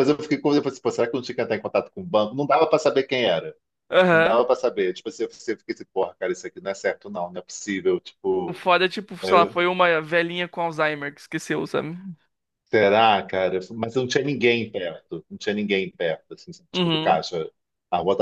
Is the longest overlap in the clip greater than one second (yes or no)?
no